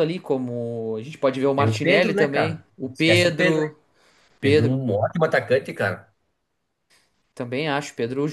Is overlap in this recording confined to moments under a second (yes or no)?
no